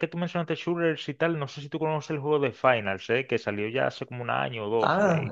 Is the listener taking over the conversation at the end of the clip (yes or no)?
yes